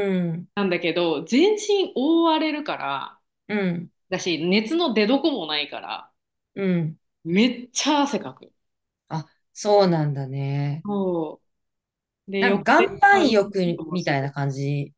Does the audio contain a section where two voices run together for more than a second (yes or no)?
yes